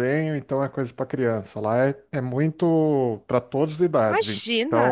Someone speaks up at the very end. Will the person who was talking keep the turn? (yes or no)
no